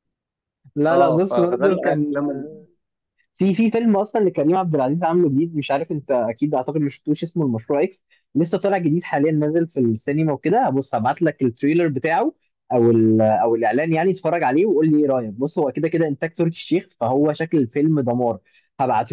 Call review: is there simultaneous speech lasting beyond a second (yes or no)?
yes